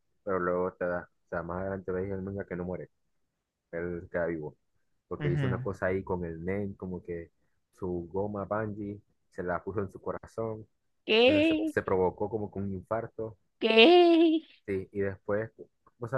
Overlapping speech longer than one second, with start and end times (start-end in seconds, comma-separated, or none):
none